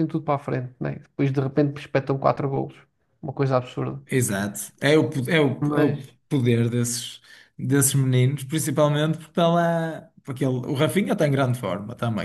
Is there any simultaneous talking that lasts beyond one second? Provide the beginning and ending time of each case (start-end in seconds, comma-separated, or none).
none